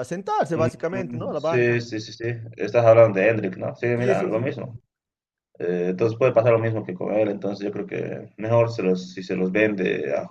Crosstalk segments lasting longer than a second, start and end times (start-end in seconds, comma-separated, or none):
0.5-1.8